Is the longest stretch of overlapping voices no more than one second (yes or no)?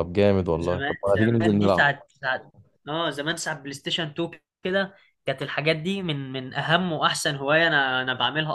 no